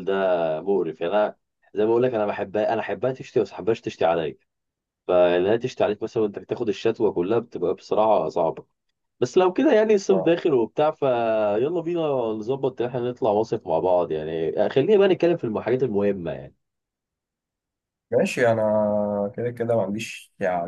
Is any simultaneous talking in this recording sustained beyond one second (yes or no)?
no